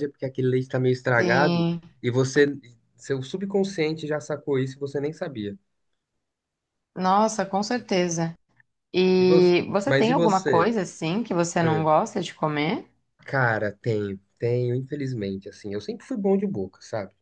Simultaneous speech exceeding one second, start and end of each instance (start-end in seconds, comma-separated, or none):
9.2-10.7